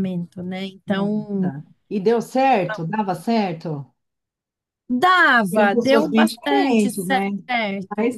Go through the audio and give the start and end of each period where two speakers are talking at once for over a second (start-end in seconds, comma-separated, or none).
5.5-7.2